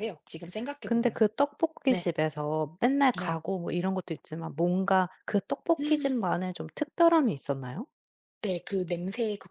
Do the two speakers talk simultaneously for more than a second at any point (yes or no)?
no